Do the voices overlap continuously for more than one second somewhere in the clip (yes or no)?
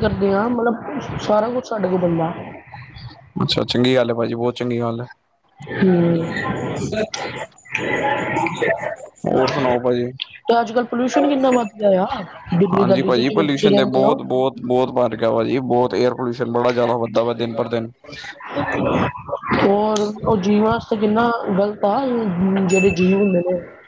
yes